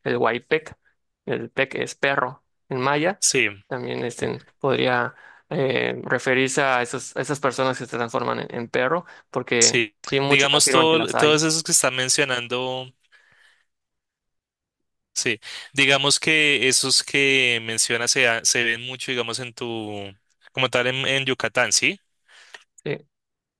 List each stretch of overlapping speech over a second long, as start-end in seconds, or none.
9.6-11.4